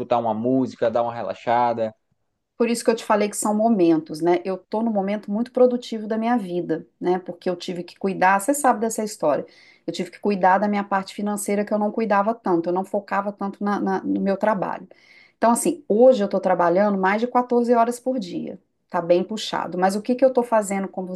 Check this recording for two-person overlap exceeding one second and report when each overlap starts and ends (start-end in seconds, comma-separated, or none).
none